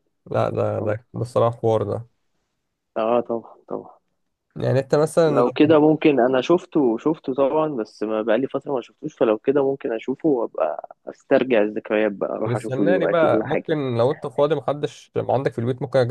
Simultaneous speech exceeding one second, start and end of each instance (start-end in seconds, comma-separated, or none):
12.4-13.7